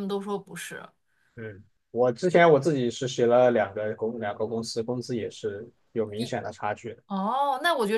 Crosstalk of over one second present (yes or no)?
no